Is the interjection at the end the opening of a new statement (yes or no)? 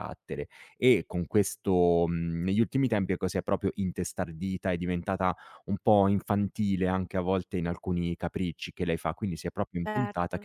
no